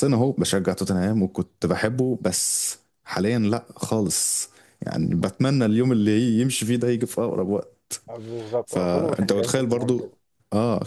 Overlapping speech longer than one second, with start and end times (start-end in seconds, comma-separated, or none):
8.7-10.1